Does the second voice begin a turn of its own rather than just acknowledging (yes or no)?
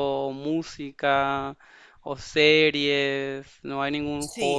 yes